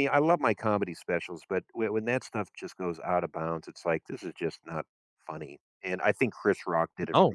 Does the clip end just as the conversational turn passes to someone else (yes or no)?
no